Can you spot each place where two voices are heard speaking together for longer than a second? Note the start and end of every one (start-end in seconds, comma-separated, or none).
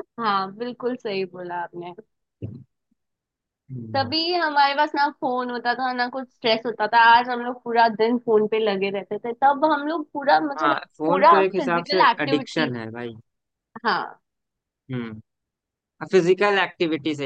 10.6-12.7